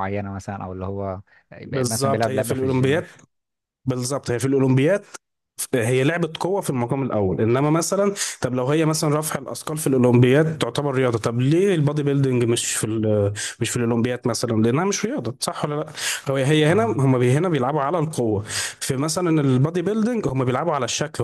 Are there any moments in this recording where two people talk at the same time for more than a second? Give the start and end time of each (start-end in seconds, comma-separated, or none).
1.6-3.0